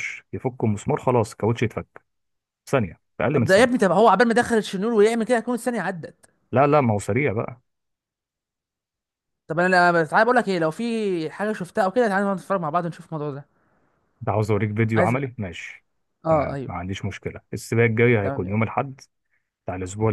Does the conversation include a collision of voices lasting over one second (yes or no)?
no